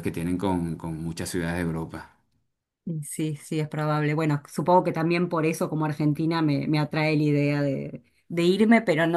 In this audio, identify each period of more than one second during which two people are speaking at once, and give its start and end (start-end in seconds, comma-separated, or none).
none